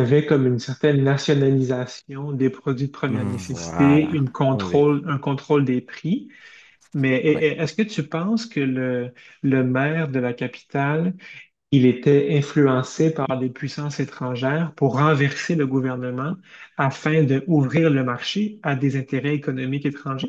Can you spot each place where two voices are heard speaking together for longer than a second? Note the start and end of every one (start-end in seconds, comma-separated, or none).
3.0-4.8